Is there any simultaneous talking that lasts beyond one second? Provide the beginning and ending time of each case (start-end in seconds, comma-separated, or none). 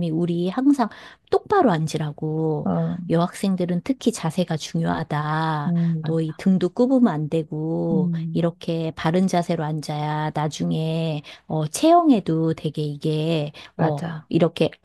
none